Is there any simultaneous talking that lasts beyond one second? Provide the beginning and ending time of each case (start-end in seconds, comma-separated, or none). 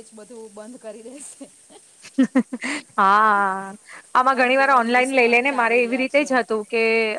4.3-6.3